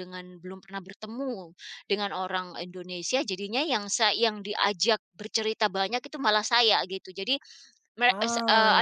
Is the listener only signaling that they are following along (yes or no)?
yes